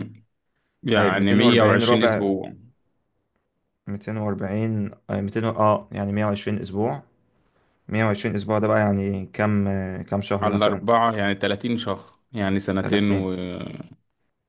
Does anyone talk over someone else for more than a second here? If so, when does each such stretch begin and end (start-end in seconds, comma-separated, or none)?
0.9-2.2